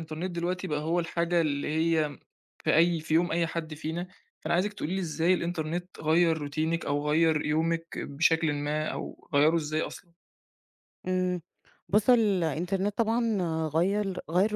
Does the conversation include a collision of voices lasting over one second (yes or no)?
no